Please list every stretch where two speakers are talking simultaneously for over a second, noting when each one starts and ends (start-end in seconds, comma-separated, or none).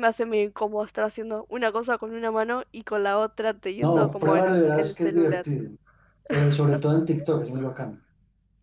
3.8-5.5